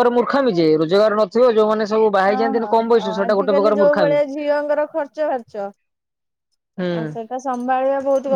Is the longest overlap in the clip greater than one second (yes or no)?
yes